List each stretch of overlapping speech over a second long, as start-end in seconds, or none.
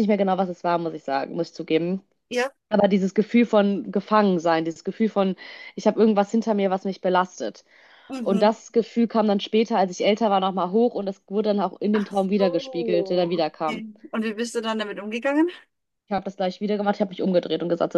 11.9-13.8